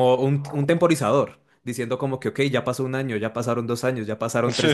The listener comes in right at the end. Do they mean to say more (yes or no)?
yes